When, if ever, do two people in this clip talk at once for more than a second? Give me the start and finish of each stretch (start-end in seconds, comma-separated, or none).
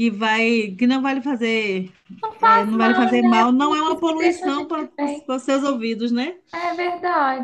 2.4-5.4